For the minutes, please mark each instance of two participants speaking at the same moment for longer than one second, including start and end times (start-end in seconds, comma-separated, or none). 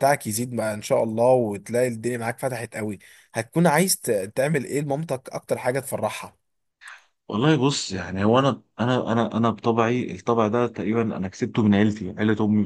none